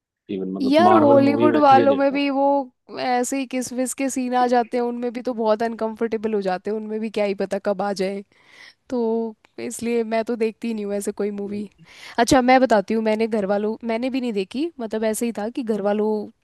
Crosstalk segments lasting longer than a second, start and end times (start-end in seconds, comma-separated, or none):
0.6-2.2